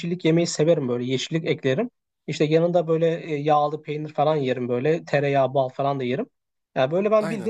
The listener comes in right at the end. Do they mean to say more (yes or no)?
no